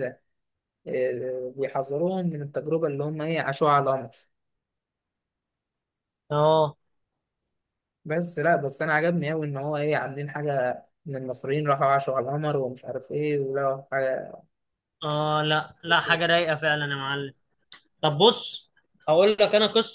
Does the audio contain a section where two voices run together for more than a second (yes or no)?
no